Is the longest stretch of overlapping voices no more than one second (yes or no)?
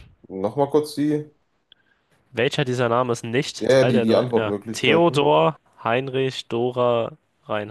no